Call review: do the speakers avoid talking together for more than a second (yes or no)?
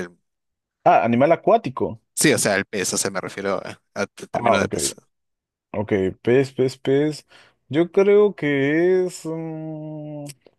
yes